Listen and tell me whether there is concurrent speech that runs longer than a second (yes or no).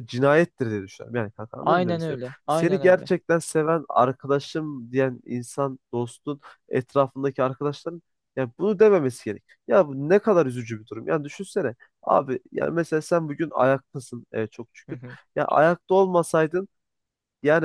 yes